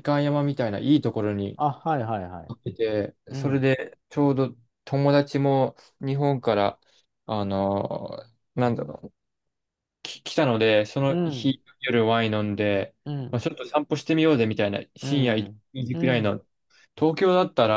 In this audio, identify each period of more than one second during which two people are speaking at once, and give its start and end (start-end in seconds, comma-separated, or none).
15.0-16.4